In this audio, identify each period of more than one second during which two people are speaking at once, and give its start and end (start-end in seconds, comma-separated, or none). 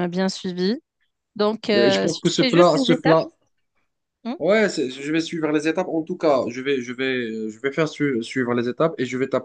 1.8-3.2